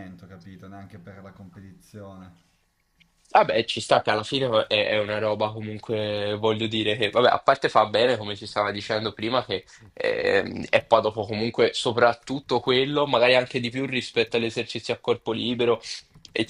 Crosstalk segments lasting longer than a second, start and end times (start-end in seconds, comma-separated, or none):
none